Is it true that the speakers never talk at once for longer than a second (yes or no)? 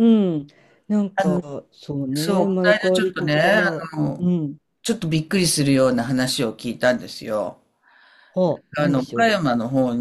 no